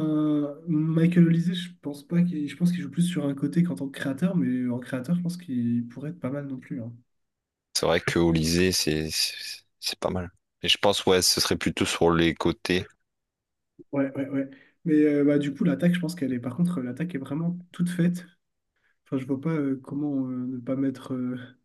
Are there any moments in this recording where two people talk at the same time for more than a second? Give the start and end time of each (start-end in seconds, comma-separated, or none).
none